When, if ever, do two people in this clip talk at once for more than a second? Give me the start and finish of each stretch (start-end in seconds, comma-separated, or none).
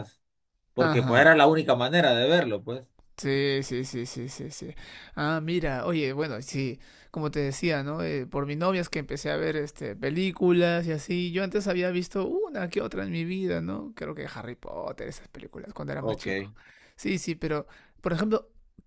none